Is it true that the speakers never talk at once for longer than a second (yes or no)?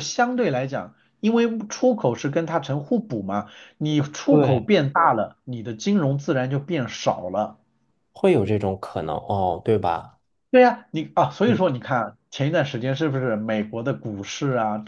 yes